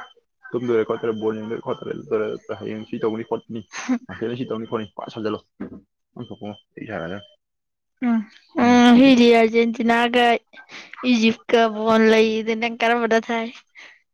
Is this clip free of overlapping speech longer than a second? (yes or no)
yes